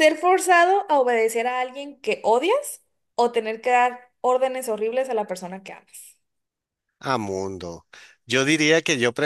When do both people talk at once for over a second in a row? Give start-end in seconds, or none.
none